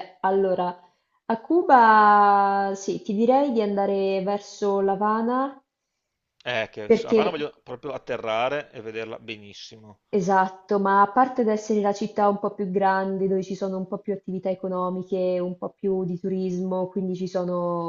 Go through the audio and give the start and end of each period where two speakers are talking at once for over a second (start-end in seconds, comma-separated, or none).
none